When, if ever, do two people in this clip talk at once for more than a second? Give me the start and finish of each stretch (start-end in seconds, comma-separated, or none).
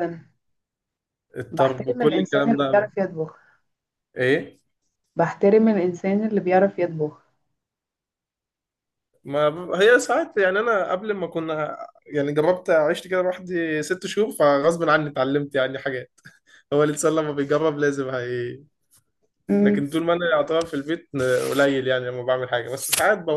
1.5-2.9